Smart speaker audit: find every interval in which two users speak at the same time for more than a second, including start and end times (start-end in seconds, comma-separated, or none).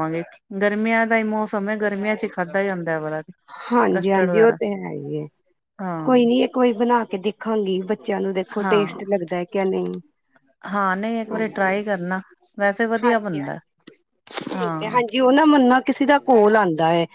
none